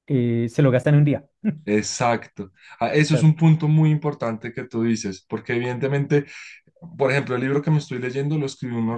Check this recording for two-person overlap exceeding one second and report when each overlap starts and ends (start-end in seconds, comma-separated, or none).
none